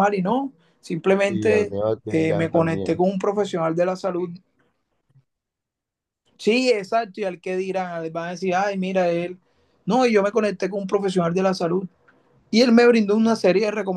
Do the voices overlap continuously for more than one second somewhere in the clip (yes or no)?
yes